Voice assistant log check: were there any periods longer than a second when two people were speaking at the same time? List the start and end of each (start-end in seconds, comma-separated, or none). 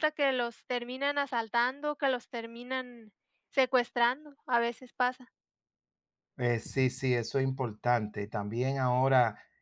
none